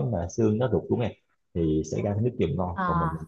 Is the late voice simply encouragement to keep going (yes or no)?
yes